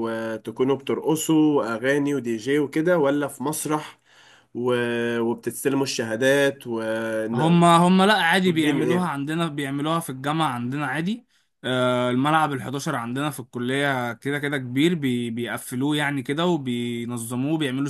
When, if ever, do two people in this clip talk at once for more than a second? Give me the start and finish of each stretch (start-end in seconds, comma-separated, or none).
none